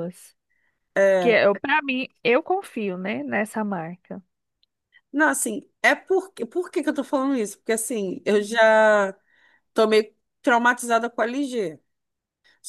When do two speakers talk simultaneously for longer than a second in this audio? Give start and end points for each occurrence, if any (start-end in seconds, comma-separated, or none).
none